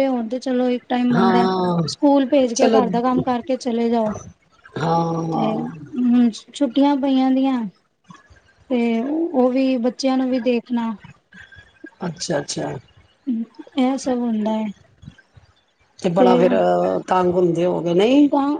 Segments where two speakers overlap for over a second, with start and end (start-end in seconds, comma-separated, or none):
none